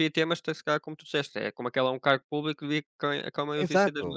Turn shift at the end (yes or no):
yes